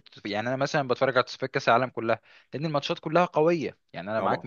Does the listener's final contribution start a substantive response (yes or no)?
no